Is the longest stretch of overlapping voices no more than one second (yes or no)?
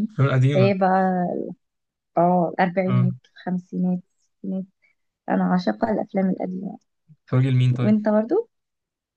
yes